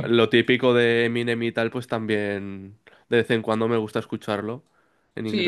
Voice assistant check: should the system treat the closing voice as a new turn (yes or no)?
yes